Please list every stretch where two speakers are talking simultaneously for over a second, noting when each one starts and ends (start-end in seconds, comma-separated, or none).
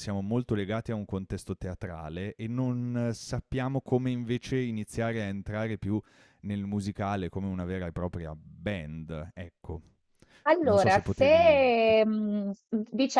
10.6-11.9